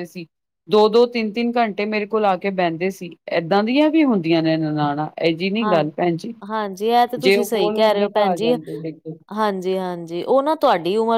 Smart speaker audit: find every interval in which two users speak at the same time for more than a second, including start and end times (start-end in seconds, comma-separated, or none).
7.2-8.5